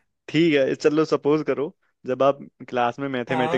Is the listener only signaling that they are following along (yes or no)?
yes